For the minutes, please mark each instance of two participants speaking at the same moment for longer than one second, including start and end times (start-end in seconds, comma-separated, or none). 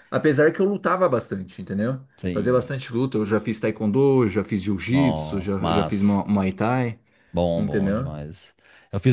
4.9-6.2